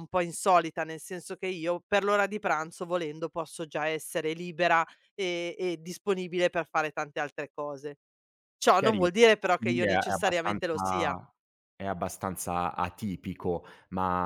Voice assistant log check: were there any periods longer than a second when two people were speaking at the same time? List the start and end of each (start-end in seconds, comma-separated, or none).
8.8-11.2